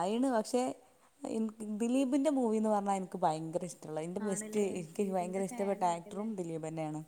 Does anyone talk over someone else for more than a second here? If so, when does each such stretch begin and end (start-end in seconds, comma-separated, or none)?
4.3-6.3